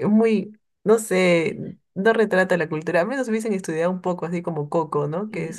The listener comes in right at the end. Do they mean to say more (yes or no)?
yes